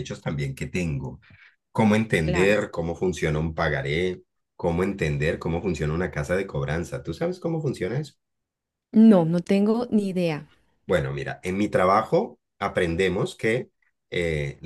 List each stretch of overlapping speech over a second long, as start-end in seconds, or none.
none